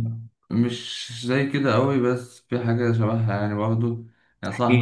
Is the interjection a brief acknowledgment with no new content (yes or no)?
yes